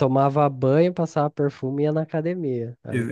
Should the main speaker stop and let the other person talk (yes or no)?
yes